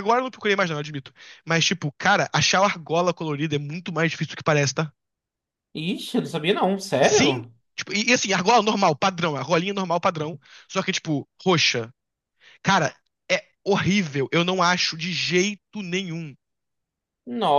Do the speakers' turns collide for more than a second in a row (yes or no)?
no